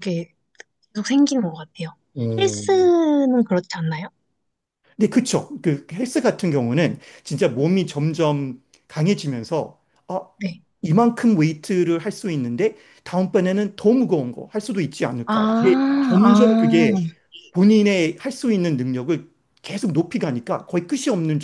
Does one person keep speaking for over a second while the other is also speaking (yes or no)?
yes